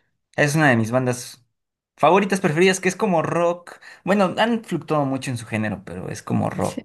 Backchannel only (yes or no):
yes